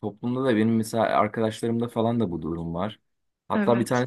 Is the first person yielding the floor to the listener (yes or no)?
no